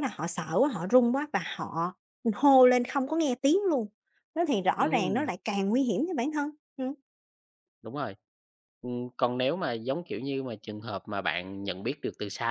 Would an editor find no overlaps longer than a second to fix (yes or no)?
yes